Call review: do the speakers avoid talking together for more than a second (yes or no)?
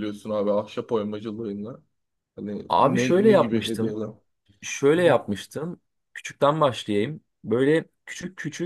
no